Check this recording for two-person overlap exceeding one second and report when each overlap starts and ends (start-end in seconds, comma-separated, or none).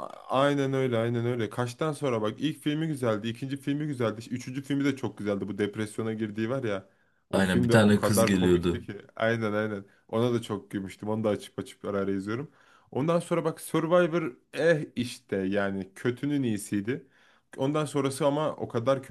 7.3-8.9